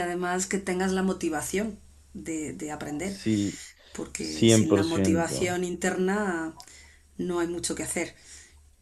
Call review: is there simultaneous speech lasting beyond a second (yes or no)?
yes